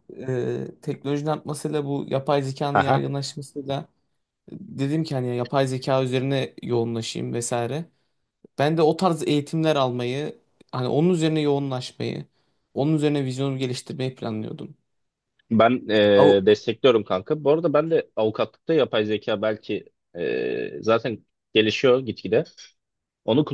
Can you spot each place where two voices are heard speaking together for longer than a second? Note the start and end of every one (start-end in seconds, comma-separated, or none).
none